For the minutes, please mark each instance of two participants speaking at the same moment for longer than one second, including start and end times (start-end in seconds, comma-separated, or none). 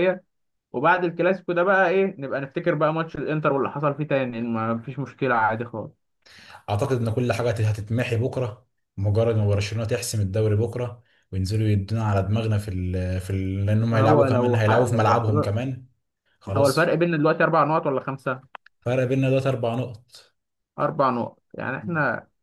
13.9-15.5